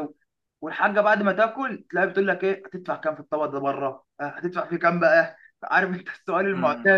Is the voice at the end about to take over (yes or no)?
yes